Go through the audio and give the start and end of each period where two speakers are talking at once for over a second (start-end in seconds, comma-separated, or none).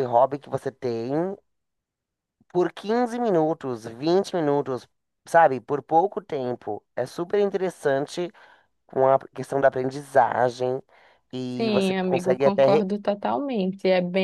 11.6-12.9